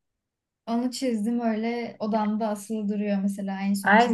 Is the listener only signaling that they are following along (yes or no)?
no